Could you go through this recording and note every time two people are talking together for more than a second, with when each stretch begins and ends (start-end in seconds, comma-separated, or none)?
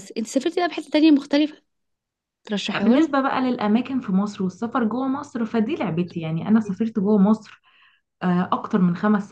none